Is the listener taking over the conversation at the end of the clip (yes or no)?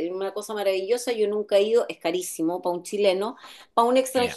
no